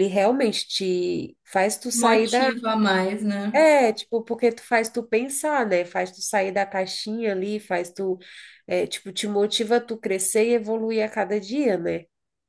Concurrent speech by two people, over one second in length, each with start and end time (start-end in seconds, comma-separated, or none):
none